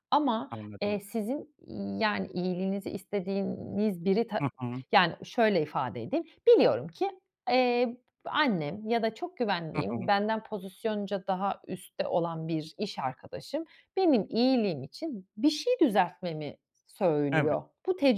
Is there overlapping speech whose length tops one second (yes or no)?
no